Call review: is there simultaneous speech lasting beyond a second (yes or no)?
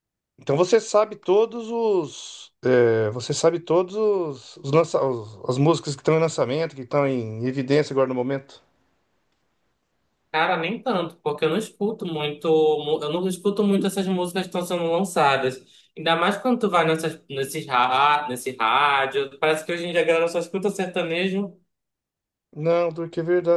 no